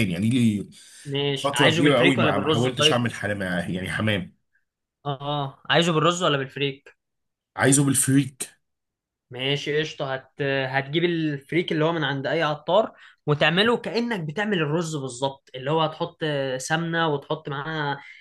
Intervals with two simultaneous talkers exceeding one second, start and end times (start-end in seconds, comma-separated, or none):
1.4-3.0